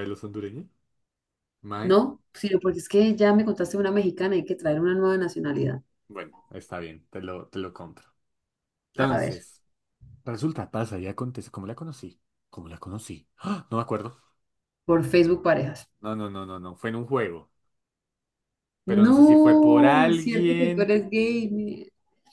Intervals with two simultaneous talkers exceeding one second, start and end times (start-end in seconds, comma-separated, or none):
18.9-20.9